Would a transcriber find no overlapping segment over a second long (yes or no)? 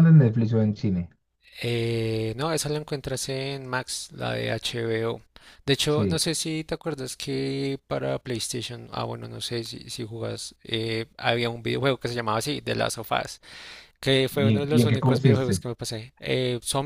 no